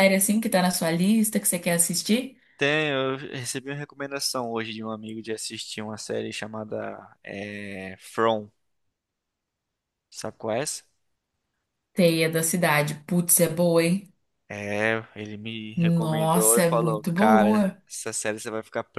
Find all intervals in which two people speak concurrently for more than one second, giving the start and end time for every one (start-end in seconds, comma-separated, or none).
15.7-17.8